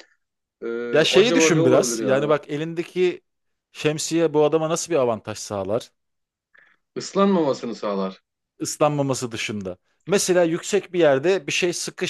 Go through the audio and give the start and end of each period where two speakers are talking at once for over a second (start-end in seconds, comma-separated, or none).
0.9-2.4